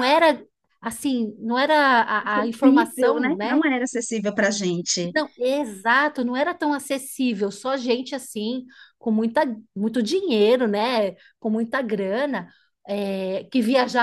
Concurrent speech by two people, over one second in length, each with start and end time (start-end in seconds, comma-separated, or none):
2.2-3.6